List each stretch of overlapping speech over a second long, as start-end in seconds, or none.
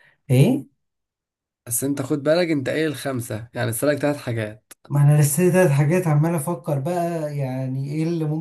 none